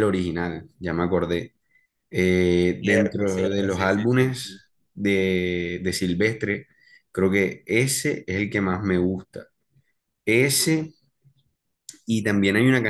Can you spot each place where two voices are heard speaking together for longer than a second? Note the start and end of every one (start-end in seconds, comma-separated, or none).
2.8-4.6